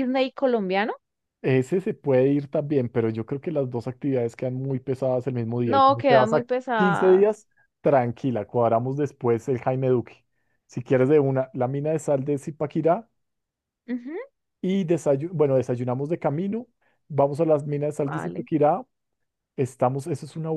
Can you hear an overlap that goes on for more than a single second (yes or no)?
yes